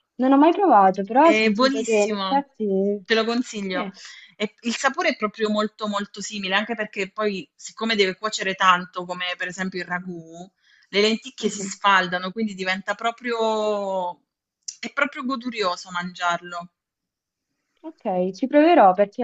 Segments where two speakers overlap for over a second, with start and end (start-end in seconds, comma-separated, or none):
1.2-2.5